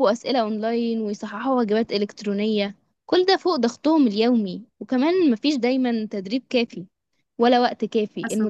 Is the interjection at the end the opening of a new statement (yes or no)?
no